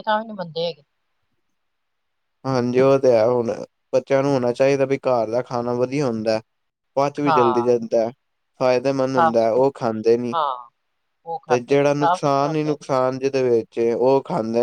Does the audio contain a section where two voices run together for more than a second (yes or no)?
yes